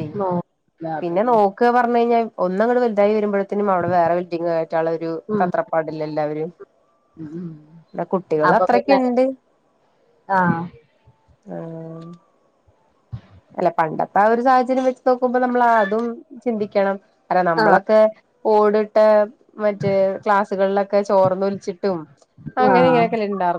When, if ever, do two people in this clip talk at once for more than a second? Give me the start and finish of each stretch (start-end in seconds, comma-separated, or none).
none